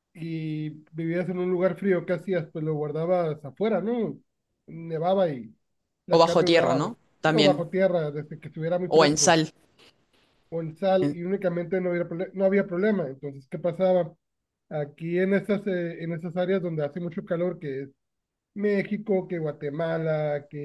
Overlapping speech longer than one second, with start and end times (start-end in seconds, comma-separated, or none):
6.1-7.7